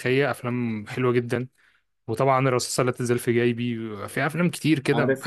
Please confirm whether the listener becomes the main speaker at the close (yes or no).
yes